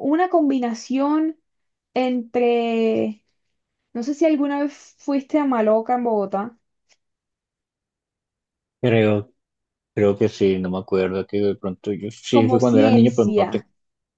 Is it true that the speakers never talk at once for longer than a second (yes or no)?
no